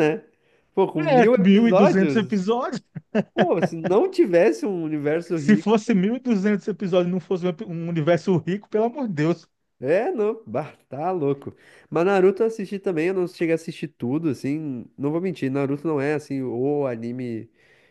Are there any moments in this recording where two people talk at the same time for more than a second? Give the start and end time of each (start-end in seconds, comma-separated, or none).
1.0-2.4